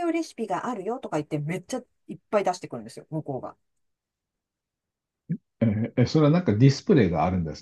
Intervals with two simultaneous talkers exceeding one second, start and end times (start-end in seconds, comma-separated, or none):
none